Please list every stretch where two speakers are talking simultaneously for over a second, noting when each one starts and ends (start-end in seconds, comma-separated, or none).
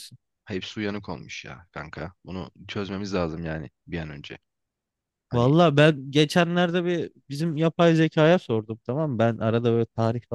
none